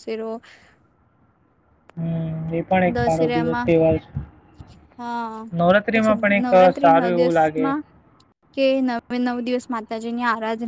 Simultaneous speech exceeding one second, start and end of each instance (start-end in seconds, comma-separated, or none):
5.9-7.7